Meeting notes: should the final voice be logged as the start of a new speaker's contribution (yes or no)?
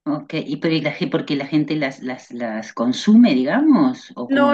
yes